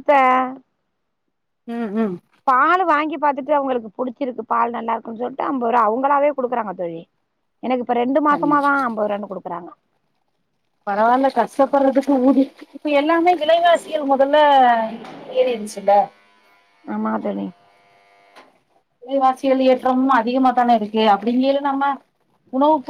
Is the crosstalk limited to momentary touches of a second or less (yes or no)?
yes